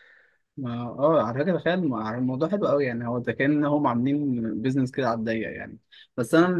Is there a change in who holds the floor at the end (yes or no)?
no